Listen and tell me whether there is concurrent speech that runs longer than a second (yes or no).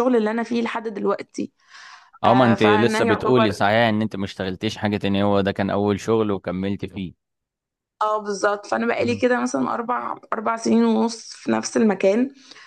yes